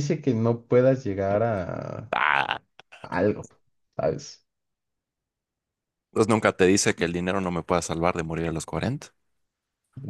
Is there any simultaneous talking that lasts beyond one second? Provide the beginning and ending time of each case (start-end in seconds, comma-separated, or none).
none